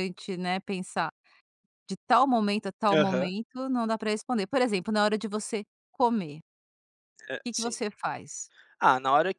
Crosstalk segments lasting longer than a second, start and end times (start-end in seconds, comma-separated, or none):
none